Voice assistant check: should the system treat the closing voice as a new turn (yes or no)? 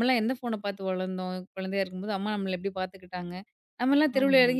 no